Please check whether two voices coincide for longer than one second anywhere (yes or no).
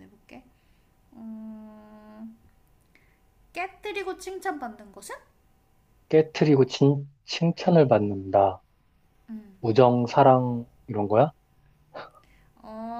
no